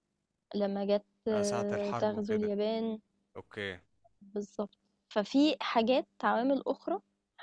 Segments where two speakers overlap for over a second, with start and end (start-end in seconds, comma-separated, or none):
1.3-2.5